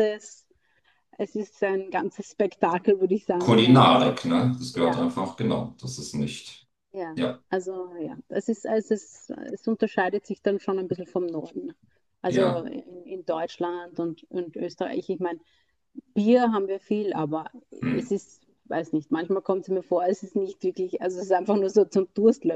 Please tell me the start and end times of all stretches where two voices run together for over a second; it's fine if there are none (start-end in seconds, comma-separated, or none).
none